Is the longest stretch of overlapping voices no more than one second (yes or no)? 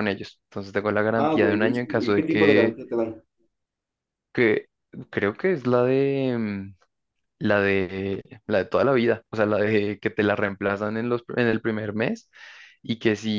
no